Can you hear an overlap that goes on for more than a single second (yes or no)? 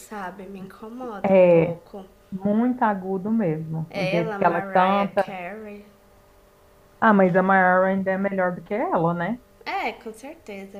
yes